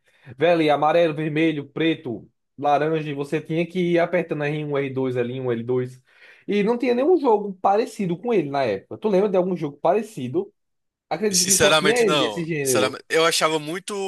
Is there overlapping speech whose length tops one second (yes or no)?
yes